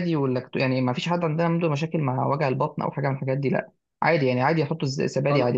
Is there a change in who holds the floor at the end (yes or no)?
no